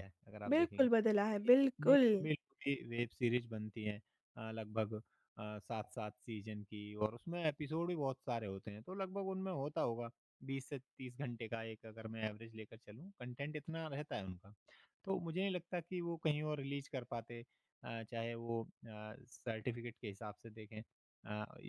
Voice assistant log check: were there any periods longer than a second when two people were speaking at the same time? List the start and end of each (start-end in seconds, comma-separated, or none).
0.5-2.0